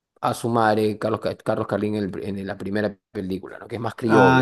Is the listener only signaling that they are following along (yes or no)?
no